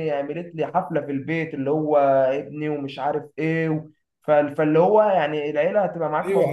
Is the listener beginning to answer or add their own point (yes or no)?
yes